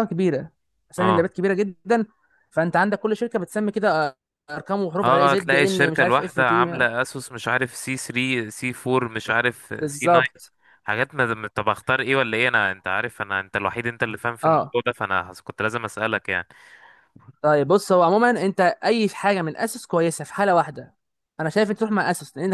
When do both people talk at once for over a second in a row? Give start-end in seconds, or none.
5.0-6.9